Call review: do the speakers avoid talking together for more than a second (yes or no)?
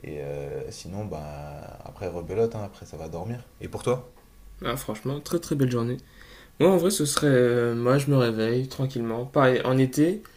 yes